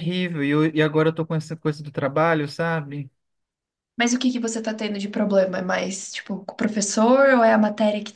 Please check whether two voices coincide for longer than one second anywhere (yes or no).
no